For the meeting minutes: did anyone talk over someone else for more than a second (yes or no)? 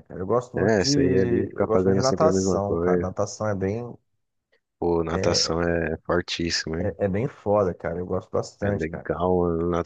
yes